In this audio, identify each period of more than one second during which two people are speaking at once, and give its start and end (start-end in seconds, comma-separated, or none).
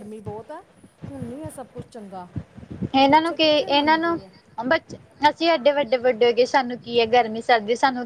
none